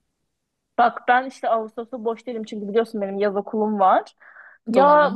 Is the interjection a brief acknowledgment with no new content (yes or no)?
yes